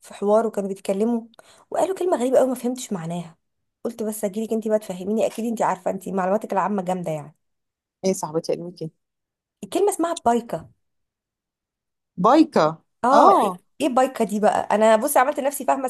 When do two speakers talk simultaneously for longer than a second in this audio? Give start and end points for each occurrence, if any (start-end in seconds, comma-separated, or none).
none